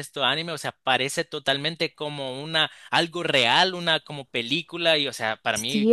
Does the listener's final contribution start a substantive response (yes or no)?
yes